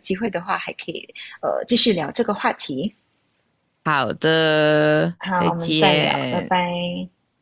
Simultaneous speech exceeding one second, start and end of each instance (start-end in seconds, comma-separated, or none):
5.2-6.5